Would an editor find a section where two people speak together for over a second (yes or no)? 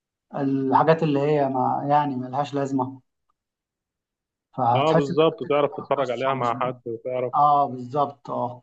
yes